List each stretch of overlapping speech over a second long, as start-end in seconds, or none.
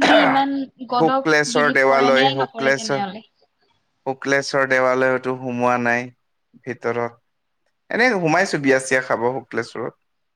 1.0-3.0